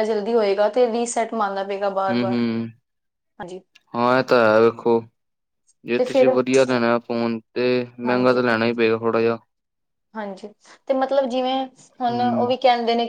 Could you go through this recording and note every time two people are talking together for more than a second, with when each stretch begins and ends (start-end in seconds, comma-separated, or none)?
none